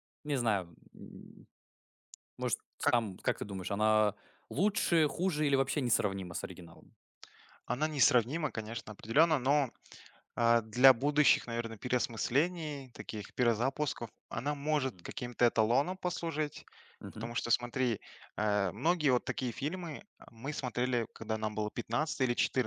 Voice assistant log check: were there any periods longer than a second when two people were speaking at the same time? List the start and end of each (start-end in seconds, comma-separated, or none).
none